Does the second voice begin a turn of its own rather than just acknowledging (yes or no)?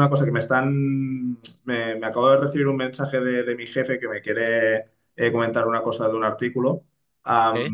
no